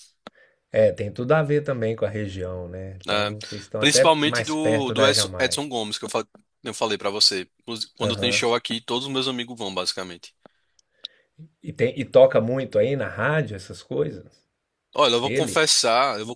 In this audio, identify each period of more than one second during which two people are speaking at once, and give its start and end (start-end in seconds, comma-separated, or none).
3.8-5.6